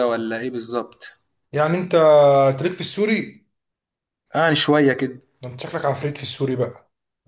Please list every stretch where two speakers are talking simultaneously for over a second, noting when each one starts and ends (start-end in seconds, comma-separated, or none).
none